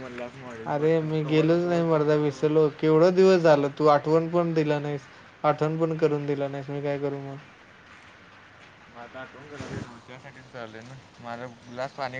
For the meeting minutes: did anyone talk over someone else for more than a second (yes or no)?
yes